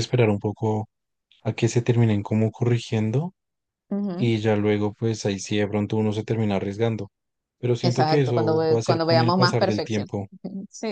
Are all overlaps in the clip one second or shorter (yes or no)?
no